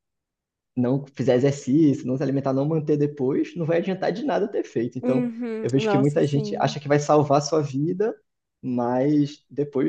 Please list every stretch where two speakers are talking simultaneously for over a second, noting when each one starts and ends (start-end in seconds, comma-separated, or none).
5.0-6.7